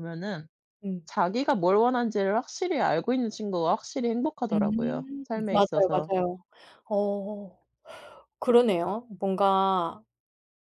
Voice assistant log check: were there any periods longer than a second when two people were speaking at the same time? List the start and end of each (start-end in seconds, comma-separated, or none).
4.5-6.1